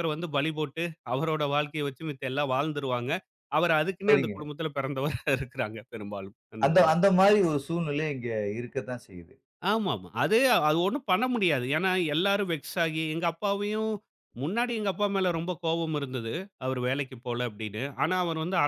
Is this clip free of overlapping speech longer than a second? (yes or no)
yes